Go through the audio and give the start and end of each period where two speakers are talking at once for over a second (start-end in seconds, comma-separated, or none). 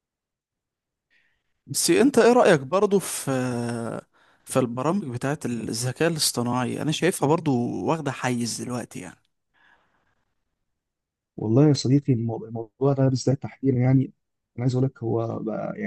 none